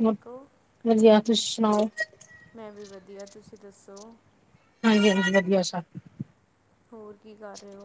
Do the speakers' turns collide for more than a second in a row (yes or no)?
no